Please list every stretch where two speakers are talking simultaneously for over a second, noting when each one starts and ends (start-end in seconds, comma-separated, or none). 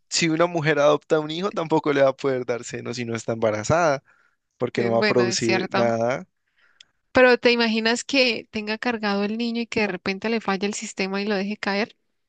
4.8-6.0